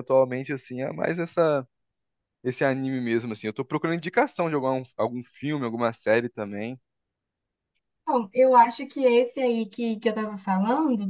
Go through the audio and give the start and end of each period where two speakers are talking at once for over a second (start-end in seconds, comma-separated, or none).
none